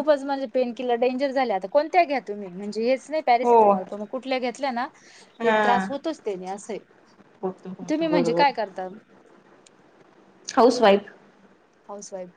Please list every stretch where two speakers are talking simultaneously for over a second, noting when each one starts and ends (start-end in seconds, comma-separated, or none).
none